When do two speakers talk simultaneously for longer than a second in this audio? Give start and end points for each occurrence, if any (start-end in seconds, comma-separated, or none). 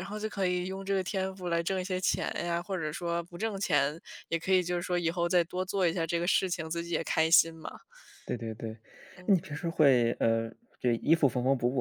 none